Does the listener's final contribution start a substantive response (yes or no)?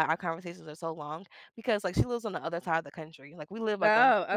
no